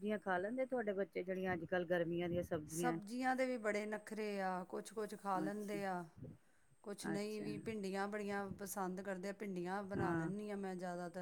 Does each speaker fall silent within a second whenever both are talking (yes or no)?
yes